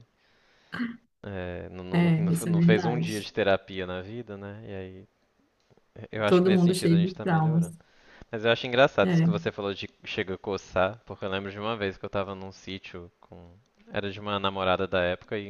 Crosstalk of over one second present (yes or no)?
yes